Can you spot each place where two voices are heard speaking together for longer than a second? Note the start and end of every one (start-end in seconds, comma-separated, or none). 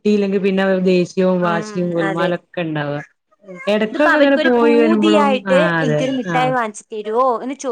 4.0-6.4